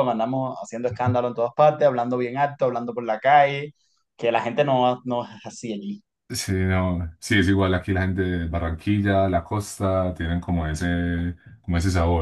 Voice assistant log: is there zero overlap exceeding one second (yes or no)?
yes